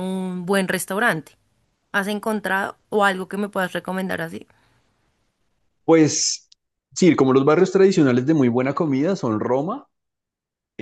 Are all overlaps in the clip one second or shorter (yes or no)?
yes